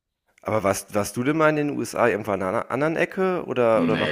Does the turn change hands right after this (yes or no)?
yes